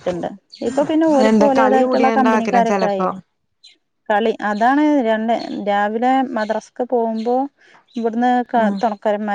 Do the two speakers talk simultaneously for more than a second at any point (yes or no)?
yes